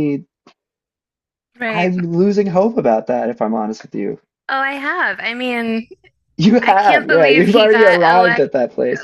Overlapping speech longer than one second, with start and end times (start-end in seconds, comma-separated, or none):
6.6-8.5